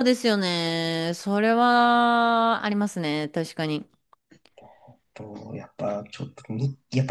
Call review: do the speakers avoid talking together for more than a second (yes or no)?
yes